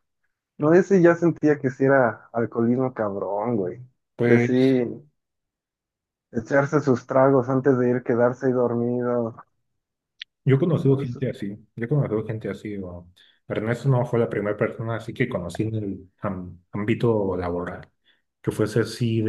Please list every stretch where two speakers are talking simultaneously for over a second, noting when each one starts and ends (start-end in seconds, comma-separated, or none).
none